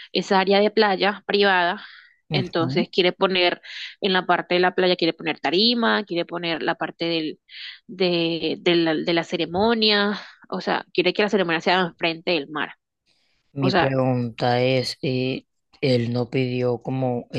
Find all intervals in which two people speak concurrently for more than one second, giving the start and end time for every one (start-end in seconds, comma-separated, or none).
none